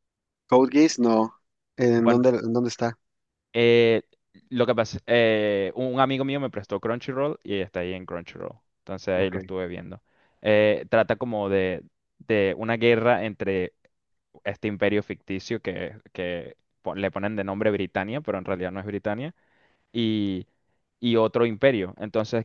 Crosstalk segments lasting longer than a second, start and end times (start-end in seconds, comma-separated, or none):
none